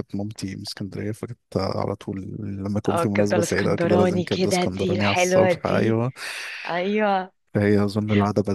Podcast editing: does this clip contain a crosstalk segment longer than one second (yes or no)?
yes